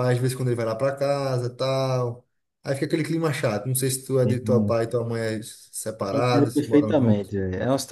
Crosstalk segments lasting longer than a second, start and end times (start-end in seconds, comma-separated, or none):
6.1-7.3